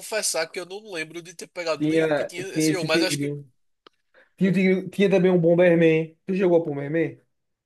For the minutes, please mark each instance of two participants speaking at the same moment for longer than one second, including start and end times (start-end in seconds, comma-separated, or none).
1.8-3.3